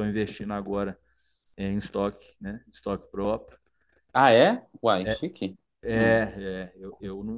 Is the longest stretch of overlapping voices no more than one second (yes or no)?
yes